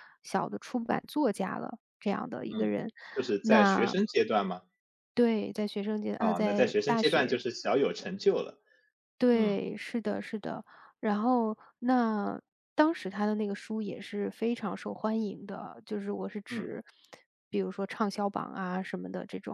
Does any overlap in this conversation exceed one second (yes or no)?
yes